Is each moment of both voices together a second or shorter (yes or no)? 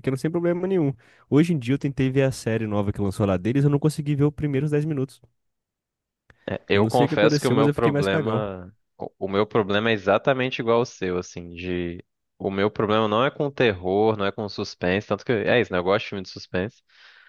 no